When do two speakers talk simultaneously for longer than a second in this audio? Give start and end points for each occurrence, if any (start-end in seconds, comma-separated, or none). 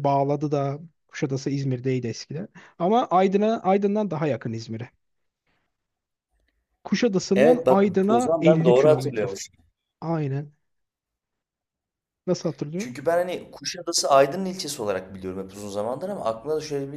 7.3-9.3